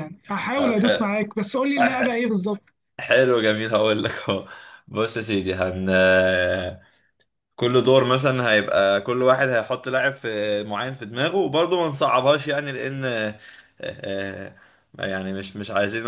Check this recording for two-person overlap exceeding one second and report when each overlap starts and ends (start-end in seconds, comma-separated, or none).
none